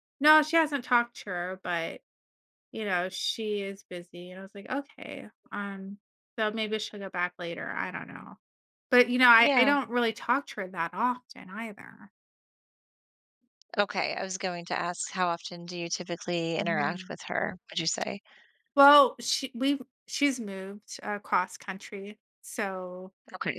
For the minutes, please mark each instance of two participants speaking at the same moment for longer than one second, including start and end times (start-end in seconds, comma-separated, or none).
none